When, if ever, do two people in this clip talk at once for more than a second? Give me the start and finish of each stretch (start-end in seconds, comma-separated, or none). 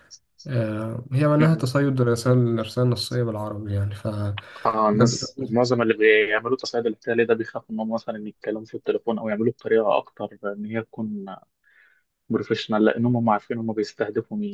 none